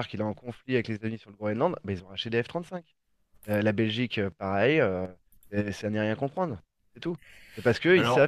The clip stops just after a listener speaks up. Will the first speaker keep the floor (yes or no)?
yes